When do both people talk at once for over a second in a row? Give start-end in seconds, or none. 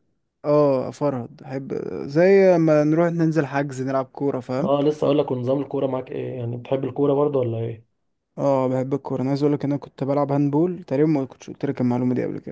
none